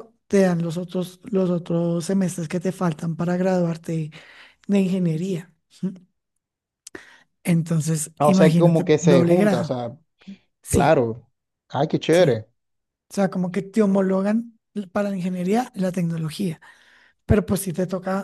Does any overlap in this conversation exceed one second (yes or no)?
yes